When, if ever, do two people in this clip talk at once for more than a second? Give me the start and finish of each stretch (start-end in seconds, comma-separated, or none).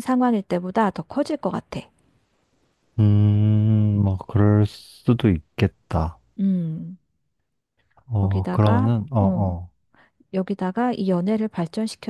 8.1-9.6